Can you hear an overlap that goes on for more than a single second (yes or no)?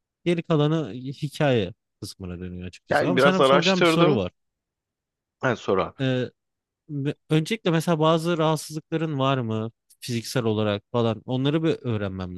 yes